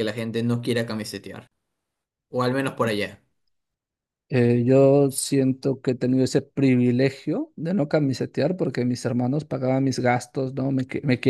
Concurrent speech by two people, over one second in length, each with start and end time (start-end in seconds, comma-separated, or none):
none